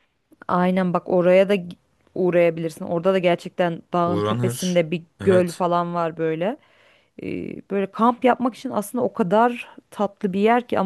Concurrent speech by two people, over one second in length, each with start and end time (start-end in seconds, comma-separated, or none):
4.0-5.6